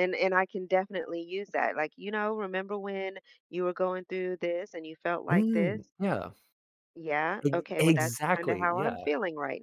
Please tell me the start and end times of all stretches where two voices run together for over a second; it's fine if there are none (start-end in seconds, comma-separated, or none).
7.4-9.0